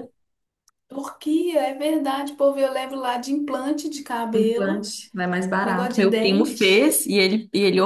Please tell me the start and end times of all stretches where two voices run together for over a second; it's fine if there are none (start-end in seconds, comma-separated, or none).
5.6-6.9